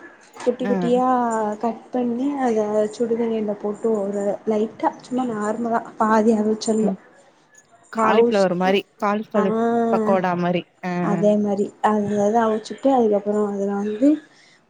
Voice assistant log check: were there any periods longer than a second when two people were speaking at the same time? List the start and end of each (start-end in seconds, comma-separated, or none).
none